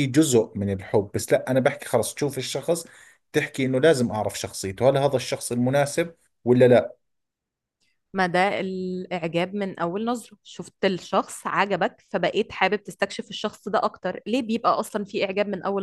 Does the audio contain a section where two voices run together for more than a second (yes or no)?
no